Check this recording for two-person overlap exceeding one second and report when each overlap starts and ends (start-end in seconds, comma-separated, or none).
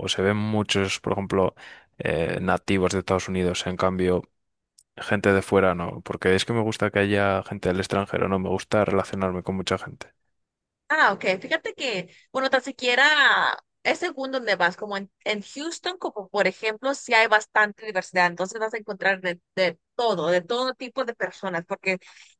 none